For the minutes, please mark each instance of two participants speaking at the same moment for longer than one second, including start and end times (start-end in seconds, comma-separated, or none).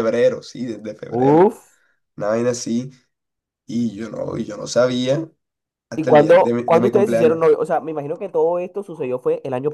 6.0-7.4